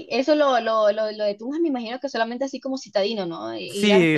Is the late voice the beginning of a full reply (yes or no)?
yes